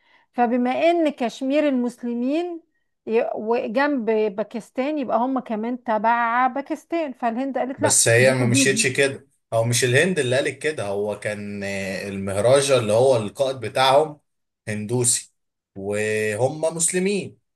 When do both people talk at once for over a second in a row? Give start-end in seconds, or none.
7.8-9.0